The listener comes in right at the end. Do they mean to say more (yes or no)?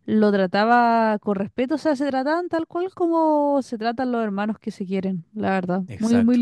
no